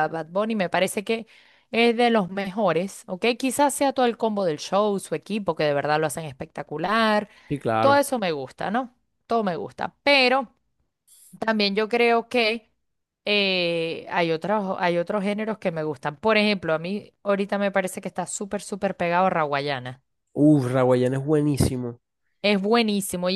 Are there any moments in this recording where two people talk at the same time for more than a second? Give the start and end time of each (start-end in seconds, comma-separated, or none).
none